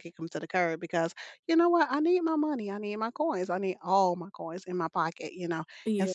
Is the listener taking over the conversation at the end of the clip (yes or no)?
no